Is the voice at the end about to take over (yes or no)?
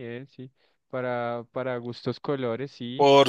no